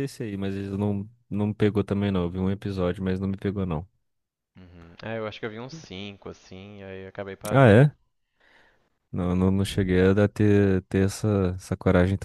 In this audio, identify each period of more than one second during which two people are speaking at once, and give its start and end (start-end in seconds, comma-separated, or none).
none